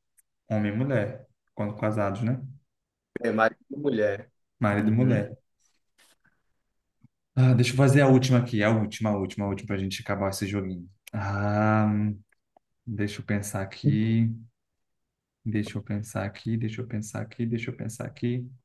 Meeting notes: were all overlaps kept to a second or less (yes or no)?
yes